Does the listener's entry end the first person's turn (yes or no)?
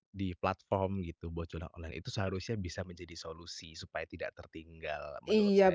yes